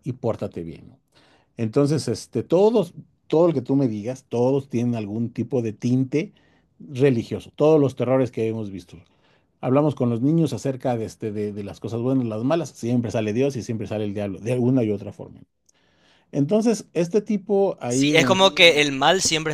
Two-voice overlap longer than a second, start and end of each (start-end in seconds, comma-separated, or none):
none